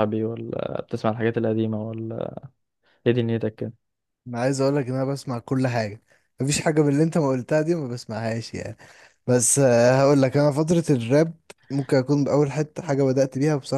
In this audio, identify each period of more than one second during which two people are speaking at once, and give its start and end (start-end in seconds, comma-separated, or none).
none